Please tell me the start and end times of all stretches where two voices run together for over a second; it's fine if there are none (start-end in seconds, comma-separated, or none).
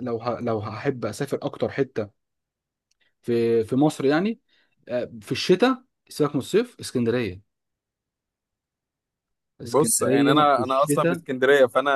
9.6-11.2